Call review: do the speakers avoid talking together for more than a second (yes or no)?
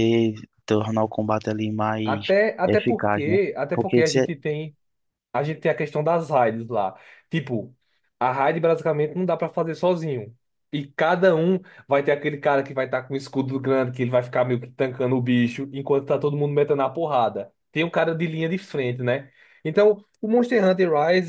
no